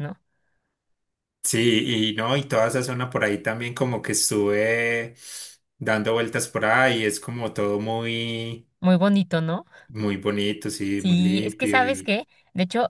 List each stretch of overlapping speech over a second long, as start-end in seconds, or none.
11.0-12.2